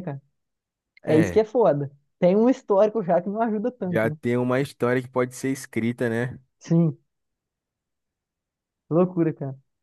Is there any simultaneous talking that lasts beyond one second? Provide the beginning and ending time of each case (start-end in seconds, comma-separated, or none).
none